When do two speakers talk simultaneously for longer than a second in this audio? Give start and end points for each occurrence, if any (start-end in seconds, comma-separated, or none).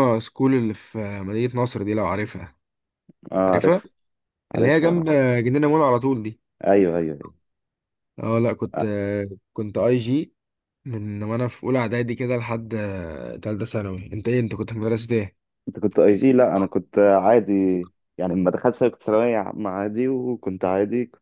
none